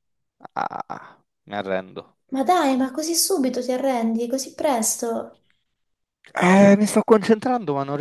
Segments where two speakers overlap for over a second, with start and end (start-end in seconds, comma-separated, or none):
none